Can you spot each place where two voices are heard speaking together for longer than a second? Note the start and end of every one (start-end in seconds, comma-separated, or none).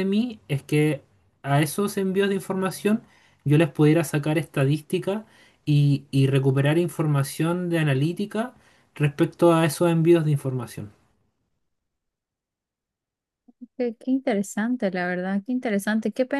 none